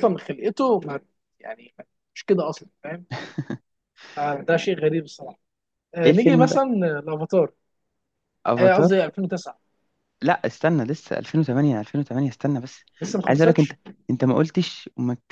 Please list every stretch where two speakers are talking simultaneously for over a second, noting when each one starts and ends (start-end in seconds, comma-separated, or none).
none